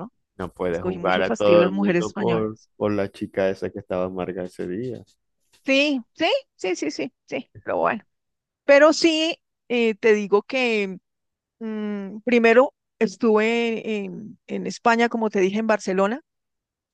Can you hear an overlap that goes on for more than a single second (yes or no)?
yes